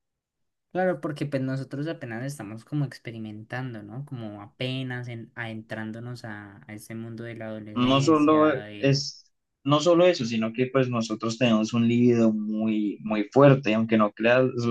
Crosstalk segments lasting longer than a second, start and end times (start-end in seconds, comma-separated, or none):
7.7-9.0